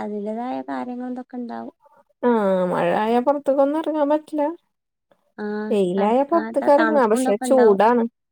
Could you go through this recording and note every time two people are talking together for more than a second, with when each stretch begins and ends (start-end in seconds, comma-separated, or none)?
5.7-7.8